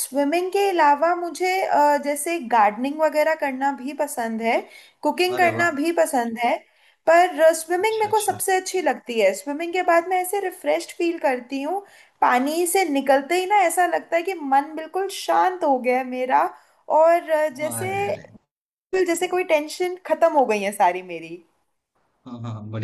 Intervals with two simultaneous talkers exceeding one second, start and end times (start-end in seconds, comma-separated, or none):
none